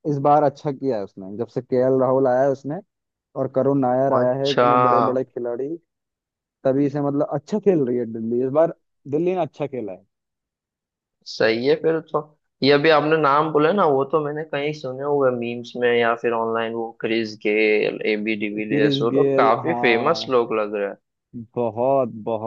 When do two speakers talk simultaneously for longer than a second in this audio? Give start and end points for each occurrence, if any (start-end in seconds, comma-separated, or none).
18.6-20.3